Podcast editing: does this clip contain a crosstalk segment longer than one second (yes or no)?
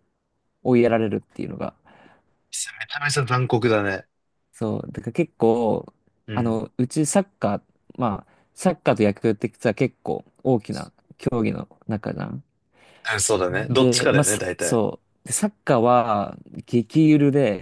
yes